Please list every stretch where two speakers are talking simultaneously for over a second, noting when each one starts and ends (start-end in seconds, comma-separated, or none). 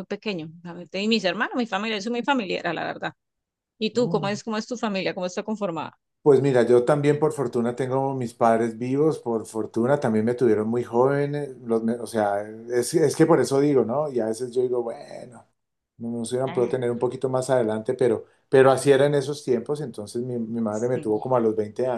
none